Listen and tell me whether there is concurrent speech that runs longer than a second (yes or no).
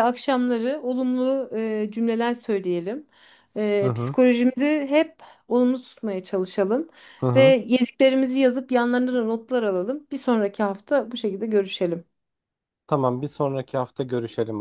no